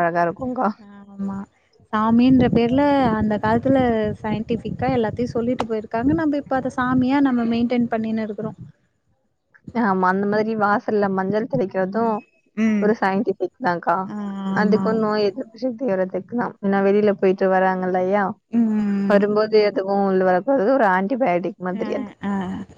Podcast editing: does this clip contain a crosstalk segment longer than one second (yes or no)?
no